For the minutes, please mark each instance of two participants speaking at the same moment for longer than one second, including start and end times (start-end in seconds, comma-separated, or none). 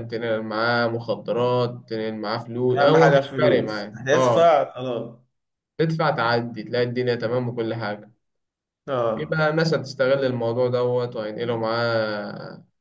2.8-4.5